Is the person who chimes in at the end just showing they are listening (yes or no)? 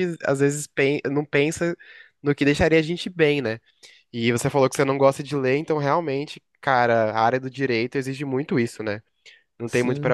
yes